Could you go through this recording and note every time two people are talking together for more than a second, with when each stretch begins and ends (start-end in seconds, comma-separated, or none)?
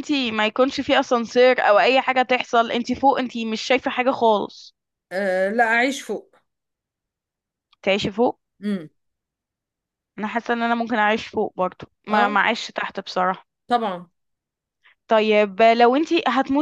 none